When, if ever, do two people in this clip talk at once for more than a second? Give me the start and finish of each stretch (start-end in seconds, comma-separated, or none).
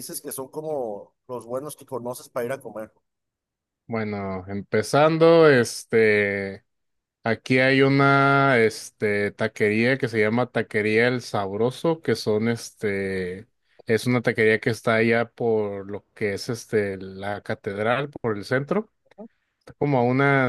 none